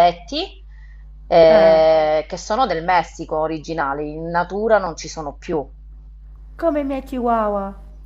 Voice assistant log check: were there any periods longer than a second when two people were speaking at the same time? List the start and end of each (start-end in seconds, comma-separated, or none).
none